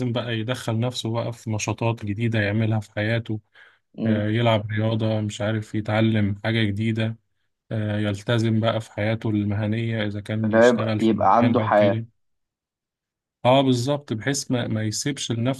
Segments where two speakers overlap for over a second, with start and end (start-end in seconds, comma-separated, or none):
10.4-12.0